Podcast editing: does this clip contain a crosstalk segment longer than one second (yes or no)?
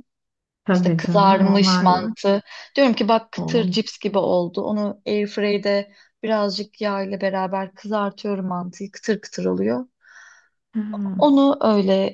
yes